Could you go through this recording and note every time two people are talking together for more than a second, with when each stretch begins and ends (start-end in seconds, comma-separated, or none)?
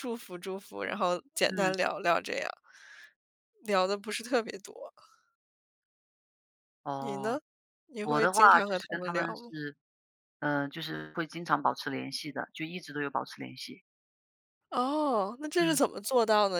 8.0-9.5